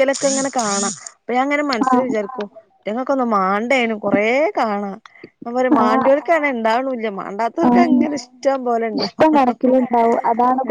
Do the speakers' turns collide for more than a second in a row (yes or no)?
no